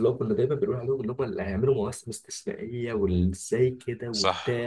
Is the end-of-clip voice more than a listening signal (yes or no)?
yes